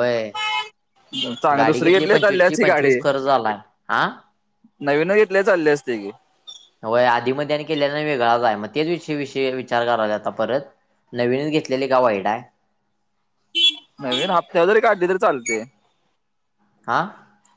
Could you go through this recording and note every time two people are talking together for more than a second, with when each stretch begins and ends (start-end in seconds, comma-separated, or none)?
1.6-3.0